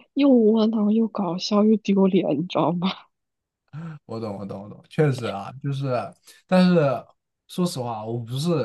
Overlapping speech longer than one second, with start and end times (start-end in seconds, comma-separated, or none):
none